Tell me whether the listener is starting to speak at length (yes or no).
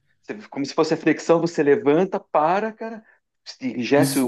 yes